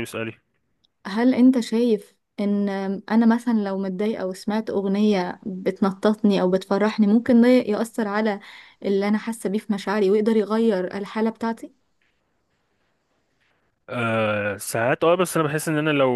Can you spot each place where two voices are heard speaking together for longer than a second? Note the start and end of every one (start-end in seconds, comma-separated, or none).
none